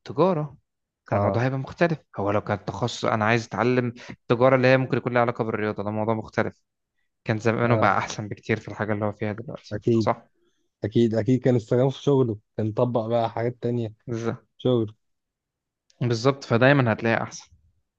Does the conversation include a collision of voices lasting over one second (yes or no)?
no